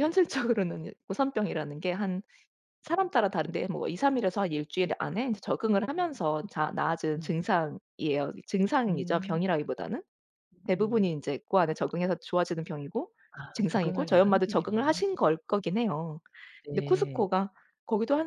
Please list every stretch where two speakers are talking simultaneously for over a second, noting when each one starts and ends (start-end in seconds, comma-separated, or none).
13.5-15.0